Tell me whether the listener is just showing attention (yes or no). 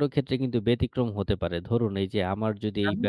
yes